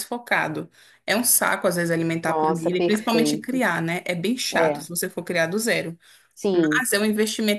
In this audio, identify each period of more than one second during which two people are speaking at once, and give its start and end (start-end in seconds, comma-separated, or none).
2.2-3.6